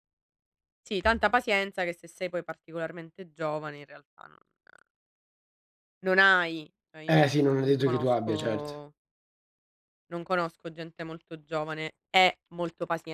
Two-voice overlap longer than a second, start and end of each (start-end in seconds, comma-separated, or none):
7.1-8.7